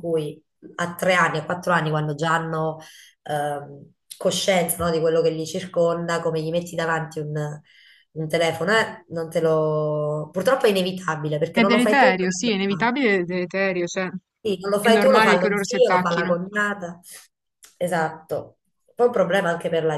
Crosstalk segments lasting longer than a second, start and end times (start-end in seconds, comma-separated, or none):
11.5-12.9, 14.8-16.5